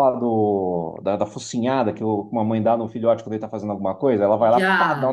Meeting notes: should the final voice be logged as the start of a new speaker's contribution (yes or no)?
no